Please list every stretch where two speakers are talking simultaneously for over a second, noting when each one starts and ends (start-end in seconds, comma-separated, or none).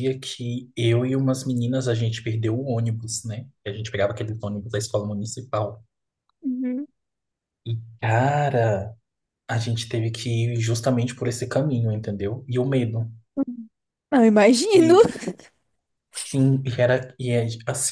none